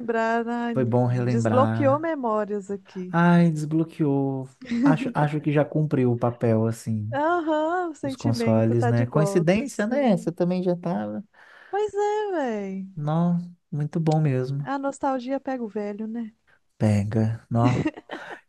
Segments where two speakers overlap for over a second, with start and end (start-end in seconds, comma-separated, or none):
0.7-2.1, 8.0-10.3